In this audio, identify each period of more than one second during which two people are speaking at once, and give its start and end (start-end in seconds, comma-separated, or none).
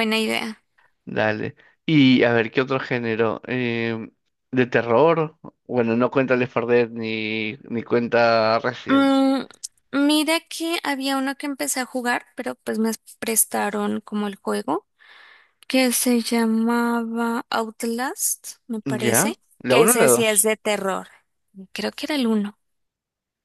18.9-20.5